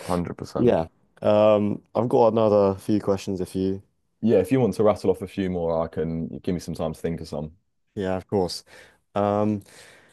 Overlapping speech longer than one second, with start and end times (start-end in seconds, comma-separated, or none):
none